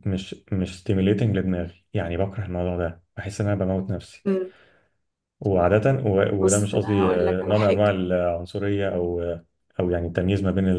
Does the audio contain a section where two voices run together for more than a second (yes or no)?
yes